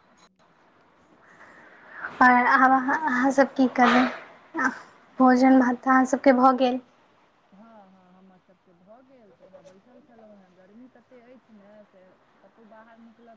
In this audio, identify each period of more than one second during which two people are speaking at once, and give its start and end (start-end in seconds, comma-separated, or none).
none